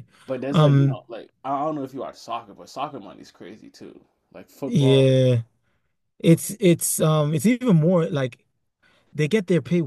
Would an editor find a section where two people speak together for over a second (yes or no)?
no